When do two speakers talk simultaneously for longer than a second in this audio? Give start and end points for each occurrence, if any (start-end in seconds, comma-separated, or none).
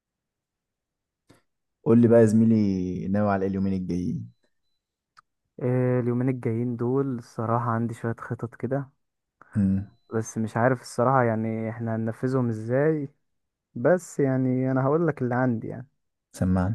none